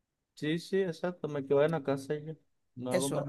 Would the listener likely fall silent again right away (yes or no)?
no